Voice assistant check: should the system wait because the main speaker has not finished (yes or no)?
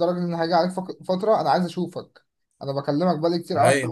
yes